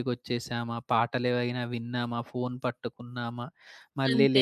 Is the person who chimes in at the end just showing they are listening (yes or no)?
yes